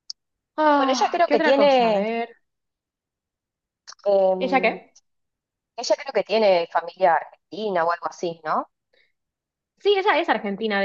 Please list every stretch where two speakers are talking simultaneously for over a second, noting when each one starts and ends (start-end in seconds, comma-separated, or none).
0.8-2.0